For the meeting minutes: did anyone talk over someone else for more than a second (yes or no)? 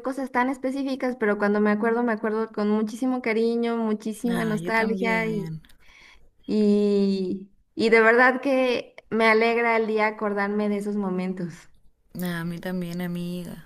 yes